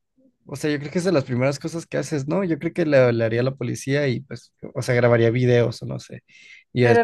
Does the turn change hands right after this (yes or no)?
yes